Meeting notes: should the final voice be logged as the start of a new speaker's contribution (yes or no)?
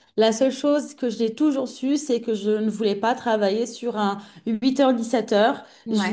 no